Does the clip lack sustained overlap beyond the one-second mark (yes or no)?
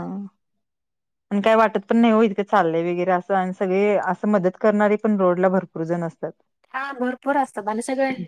yes